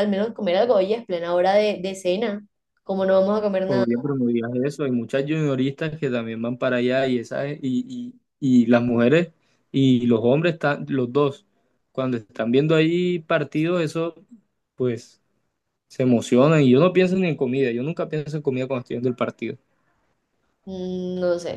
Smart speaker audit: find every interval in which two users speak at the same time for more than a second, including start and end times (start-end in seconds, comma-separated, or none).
none